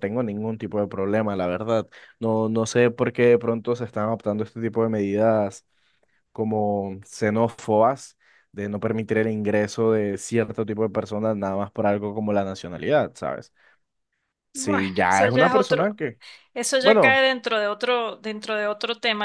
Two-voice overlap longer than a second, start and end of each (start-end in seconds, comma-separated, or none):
14.5-16.0